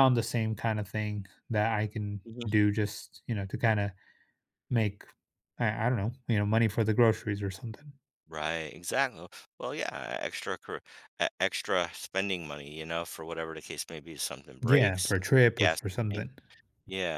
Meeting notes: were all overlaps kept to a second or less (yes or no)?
no